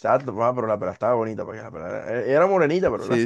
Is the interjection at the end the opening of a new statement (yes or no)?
no